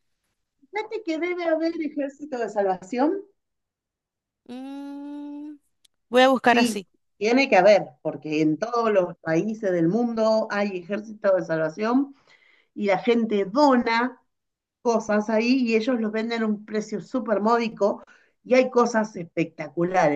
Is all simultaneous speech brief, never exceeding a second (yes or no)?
yes